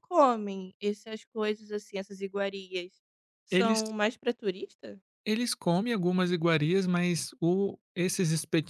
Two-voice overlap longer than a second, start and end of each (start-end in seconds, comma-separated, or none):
none